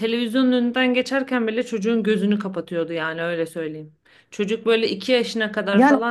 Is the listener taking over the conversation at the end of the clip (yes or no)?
no